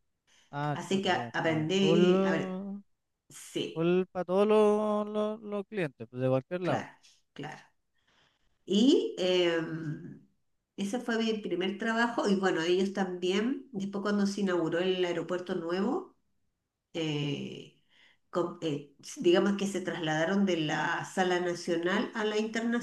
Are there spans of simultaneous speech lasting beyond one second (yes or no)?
yes